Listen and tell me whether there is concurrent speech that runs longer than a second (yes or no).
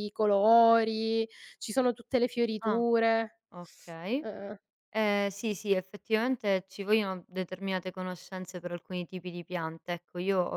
no